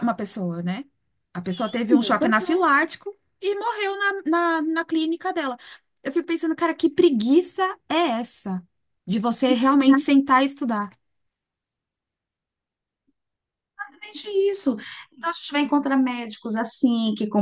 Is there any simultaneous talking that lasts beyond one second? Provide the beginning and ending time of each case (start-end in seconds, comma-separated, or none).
1.3-2.5